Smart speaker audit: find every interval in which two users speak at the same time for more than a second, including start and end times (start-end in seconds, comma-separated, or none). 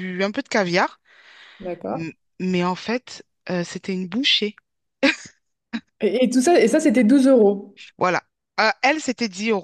none